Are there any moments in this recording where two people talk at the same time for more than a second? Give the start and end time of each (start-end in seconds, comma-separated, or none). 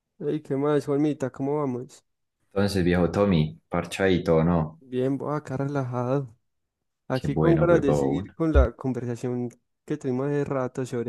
7.1-8.3